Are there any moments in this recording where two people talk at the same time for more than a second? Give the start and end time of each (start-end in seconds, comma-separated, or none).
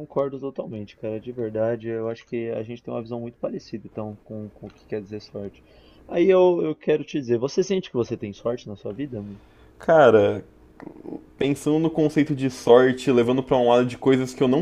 none